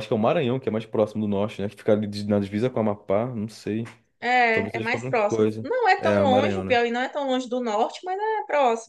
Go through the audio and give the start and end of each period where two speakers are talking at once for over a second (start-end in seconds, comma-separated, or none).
4.5-6.8